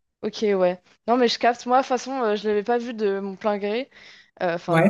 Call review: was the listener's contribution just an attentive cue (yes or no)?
yes